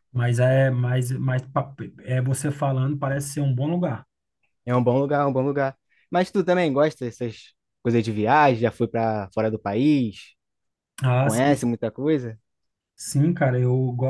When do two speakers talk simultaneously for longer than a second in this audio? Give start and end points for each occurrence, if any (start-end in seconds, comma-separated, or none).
none